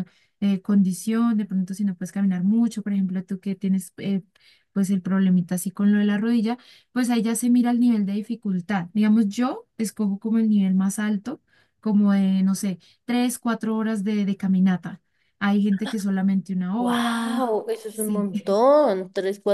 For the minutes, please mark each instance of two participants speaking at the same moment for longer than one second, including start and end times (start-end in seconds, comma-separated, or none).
16.8-18.3